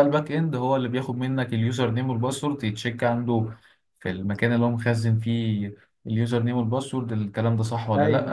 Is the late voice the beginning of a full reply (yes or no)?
no